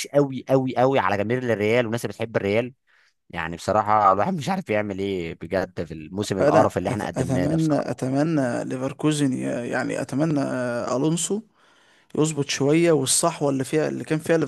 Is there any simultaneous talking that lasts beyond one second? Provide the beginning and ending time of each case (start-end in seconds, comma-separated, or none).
6.4-8.0